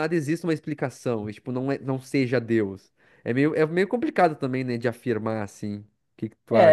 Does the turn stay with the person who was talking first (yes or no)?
no